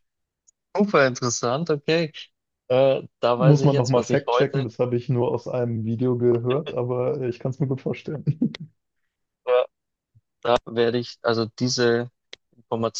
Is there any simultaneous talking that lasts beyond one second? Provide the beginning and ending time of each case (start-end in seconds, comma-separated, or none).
3.3-4.7